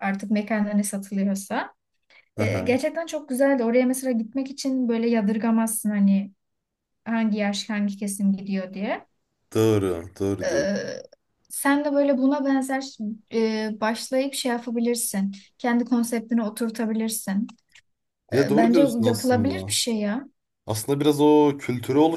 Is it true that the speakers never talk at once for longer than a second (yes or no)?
no